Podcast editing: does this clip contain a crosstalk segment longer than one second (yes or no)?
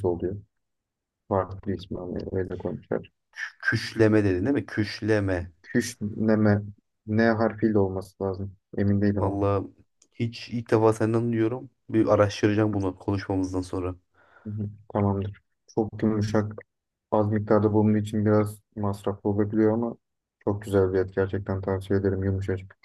no